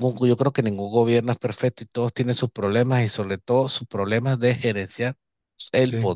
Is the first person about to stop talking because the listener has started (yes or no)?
no